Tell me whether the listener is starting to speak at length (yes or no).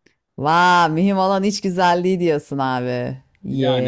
yes